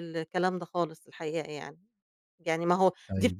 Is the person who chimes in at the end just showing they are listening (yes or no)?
yes